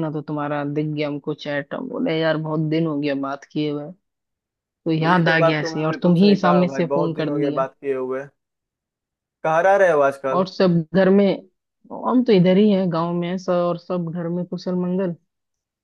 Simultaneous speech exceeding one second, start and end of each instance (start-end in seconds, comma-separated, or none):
5.0-7.7